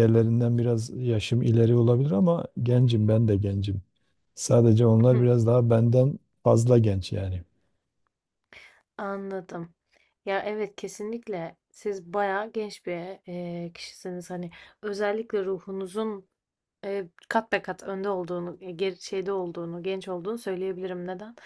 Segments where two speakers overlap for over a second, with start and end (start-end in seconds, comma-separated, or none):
none